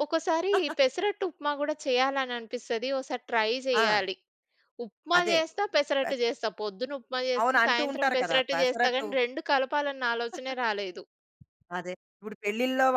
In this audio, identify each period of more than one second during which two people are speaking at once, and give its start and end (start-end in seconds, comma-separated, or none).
7.4-9.1